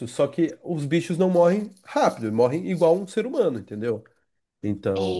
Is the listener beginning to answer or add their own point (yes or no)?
yes